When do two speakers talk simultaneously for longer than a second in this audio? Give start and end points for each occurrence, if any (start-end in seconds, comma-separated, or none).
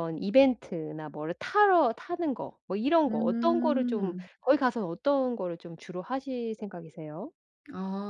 3.1-4.3